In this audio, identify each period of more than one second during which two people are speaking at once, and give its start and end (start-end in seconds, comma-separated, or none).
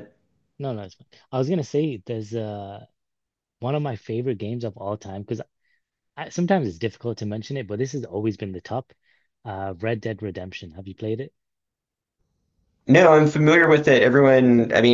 none